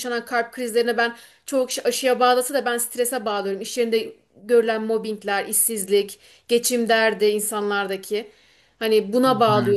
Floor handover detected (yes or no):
no